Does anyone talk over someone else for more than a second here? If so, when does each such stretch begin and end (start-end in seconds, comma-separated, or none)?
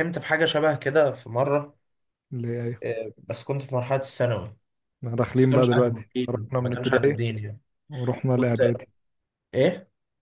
5.3-7.2